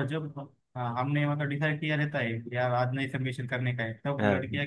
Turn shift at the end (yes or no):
no